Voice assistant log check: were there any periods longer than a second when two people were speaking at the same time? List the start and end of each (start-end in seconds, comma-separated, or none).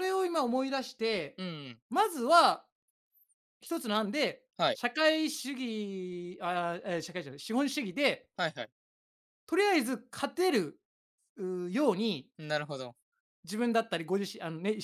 none